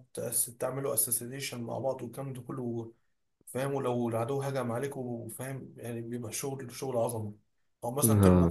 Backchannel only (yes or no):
yes